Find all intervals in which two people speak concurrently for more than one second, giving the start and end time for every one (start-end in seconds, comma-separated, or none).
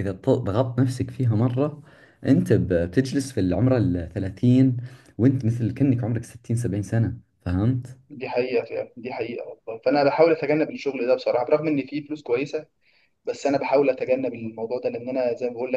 none